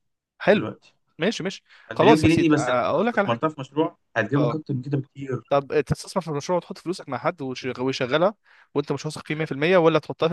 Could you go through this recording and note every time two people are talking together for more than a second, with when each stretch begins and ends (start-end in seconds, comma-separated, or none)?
1.9-3.4